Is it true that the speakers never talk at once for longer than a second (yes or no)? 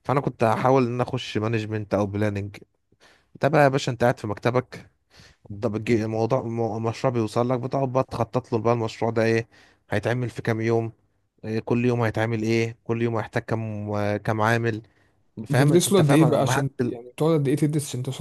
no